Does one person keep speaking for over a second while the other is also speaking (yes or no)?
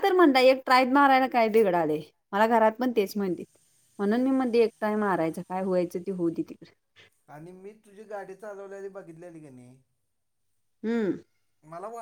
no